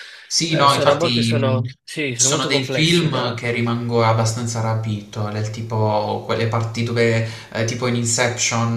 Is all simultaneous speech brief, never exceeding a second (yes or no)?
no